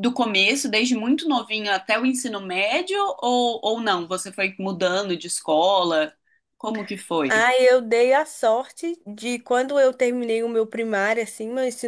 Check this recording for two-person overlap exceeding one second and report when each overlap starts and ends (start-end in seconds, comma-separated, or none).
none